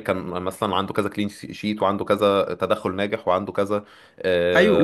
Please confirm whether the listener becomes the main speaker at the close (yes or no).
no